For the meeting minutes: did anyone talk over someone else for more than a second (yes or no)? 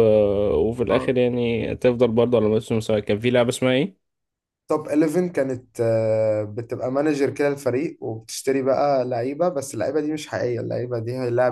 no